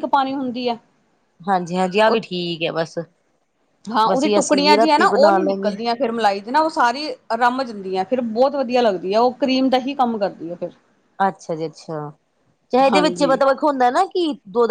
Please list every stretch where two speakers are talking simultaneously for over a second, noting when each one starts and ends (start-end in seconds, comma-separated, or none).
4.1-5.8